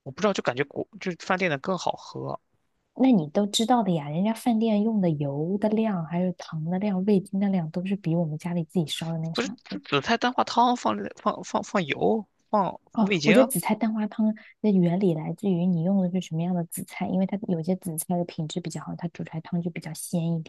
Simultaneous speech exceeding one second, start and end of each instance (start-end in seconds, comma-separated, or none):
none